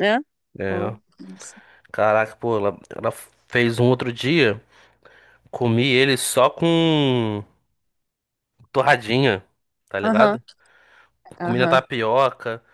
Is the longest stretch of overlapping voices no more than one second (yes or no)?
yes